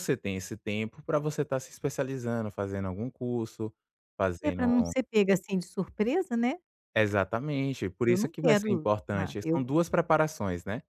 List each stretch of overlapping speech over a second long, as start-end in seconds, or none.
8.0-9.7